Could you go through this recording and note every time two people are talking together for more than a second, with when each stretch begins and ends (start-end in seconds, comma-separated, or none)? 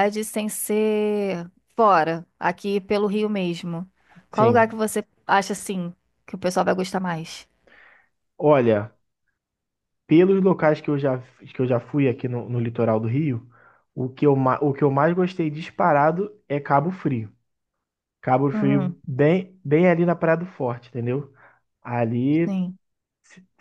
none